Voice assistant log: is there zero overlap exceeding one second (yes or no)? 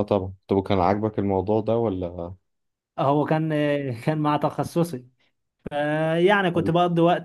yes